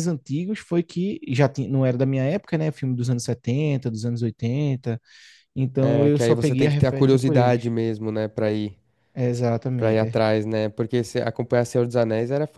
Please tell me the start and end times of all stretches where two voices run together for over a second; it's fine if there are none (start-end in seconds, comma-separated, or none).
5.8-7.7